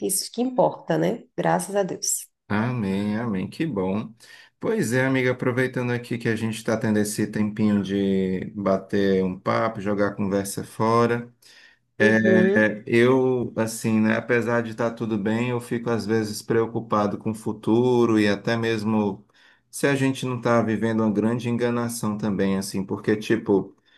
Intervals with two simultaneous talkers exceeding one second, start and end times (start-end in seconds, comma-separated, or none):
none